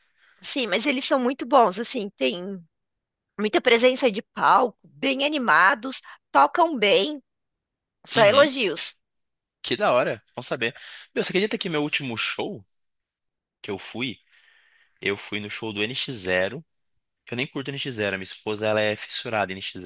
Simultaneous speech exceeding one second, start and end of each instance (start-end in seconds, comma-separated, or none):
none